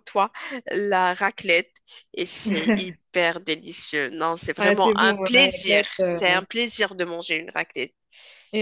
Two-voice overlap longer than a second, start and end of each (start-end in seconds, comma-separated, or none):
4.6-6.2